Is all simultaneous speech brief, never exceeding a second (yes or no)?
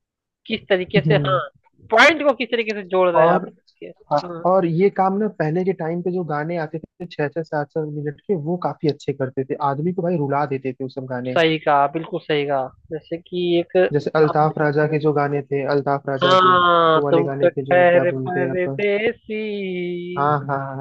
no